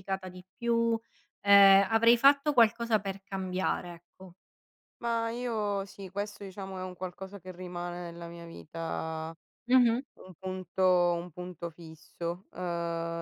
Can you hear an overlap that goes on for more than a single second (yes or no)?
no